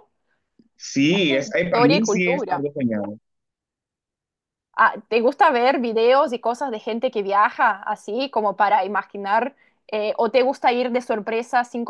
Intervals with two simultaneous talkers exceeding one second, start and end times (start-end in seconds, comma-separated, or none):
1.0-2.6